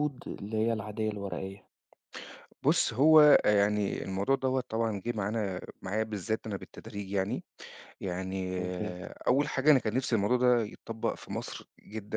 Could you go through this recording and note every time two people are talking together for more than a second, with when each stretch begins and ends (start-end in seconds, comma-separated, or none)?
none